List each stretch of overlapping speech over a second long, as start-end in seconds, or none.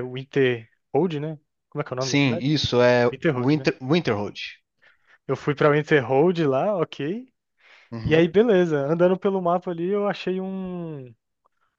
none